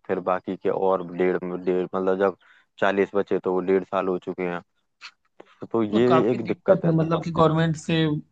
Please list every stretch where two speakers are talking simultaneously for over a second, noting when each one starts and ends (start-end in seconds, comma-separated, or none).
5.9-7.4